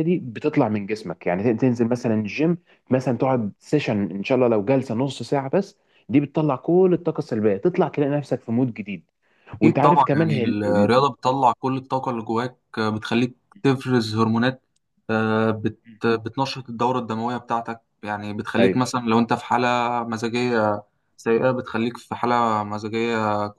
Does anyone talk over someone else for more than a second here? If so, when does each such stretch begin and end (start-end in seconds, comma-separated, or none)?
9.6-11.4